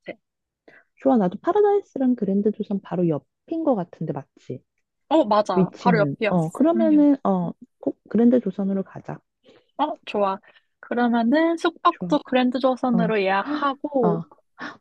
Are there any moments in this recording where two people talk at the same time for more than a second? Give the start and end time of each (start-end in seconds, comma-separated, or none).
5.5-7.0